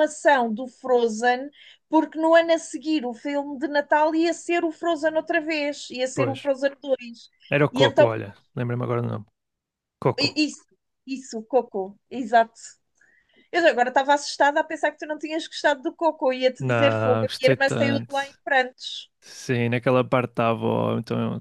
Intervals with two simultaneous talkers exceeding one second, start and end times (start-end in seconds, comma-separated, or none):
16.6-18.1